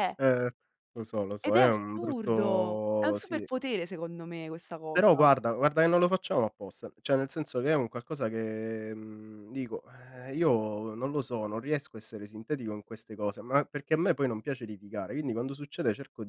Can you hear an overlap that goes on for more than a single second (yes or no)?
yes